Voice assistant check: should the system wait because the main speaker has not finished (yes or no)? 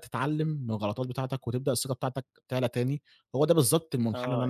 no